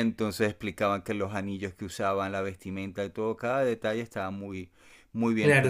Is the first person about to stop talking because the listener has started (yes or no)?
yes